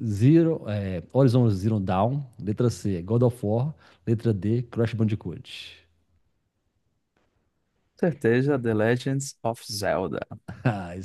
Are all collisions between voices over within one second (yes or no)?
yes